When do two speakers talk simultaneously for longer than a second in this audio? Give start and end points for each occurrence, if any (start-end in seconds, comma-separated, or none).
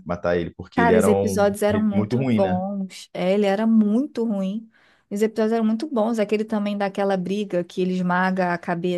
0.7-2.6